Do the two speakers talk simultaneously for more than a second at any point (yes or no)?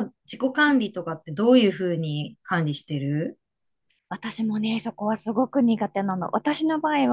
no